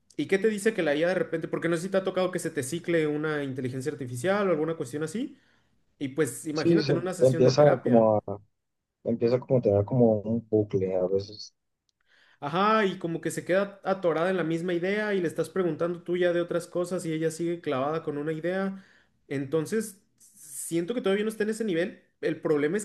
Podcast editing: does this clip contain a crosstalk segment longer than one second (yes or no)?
yes